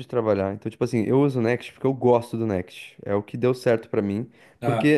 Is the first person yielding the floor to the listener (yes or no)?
no